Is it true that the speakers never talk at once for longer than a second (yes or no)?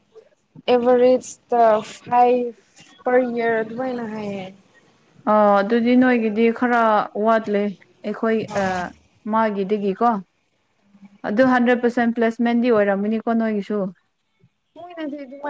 yes